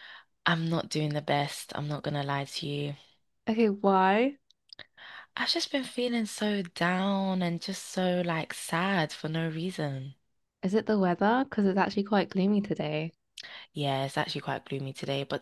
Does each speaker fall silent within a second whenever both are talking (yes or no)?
yes